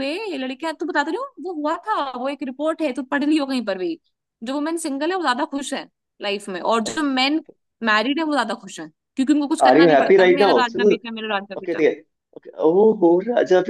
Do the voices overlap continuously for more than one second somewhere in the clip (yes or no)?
yes